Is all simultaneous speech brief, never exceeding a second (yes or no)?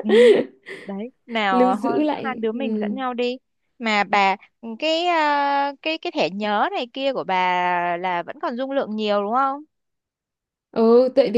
no